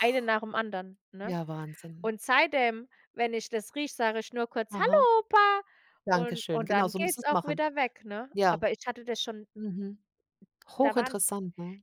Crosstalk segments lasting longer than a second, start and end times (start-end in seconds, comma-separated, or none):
6.1-7.6